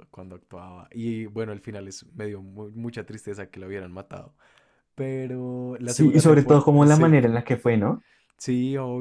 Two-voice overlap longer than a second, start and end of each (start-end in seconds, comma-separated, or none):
5.8-7.1